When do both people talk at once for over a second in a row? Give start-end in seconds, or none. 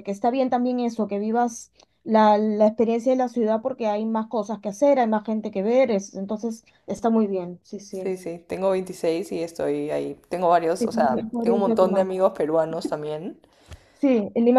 10.8-12.1